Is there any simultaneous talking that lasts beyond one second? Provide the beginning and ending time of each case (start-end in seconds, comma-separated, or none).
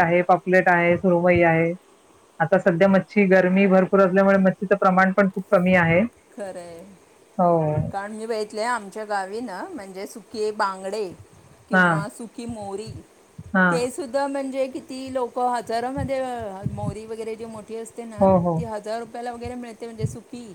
none